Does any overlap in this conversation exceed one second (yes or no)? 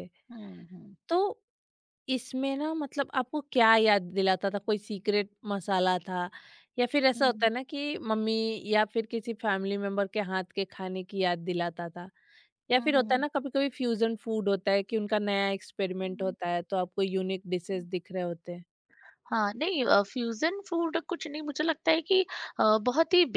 no